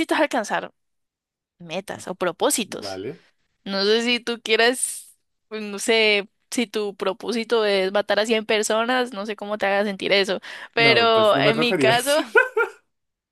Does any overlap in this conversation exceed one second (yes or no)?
yes